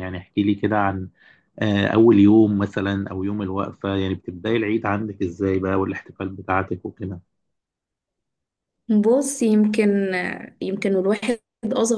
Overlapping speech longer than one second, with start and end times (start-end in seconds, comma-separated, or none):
none